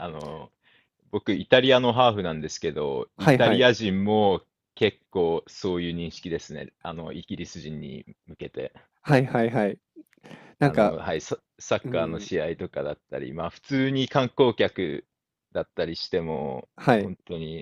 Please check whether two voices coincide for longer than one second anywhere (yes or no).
no